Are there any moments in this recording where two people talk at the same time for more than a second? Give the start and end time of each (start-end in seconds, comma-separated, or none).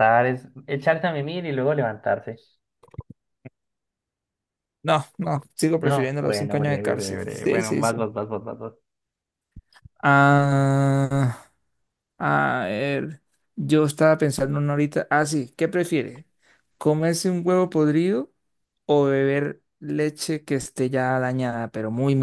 5.8-8.1